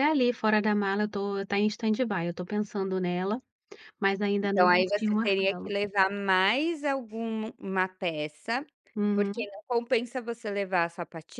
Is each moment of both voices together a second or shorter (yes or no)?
no